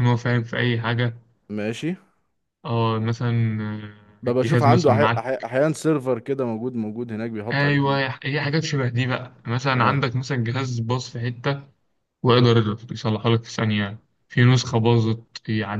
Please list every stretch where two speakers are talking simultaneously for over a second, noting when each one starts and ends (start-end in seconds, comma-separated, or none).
4.2-5.4